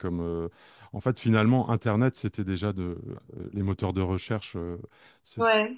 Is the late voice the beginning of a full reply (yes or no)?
no